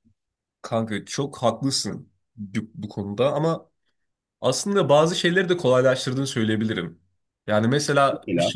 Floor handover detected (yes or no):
no